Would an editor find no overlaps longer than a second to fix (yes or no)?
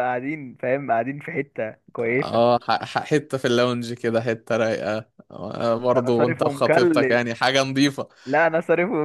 no